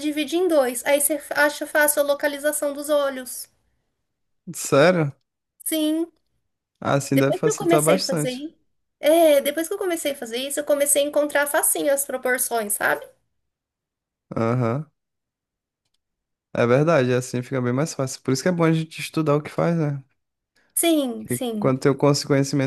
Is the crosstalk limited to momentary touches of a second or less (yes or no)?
no